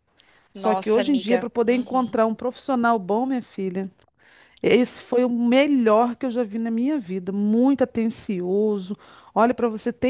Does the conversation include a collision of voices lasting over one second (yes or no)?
yes